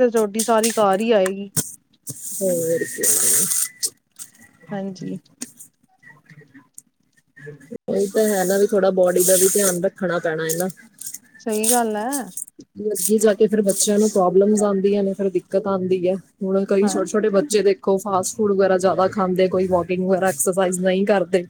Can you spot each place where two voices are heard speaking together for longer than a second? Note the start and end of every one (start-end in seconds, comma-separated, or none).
none